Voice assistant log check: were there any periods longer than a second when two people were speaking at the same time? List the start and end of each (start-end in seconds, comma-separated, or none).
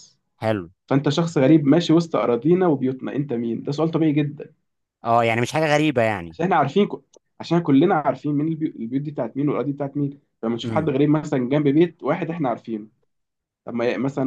none